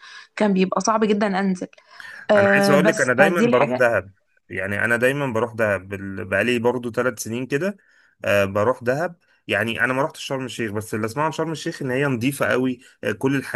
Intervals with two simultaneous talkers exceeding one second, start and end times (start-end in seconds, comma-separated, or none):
2.4-3.9